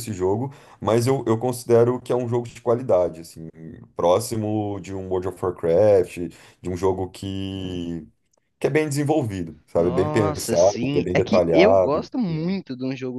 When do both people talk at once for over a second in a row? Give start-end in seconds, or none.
9.8-12.0